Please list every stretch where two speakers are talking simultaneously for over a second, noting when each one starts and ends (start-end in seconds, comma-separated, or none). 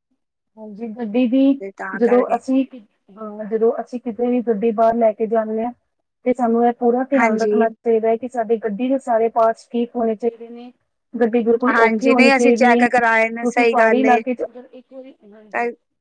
11.7-14.2